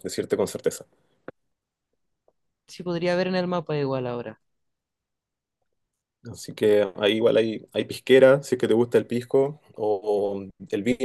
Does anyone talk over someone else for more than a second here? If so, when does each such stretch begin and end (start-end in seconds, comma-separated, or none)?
none